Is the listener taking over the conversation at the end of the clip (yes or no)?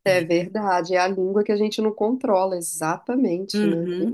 yes